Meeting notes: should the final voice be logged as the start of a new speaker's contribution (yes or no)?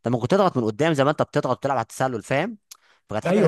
no